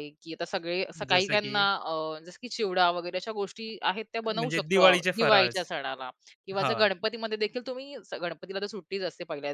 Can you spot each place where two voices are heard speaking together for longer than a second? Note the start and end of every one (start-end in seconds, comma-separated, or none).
4.2-5.7